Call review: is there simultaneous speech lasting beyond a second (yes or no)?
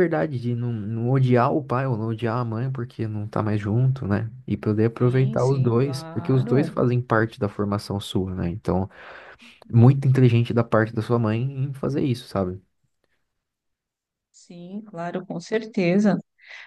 yes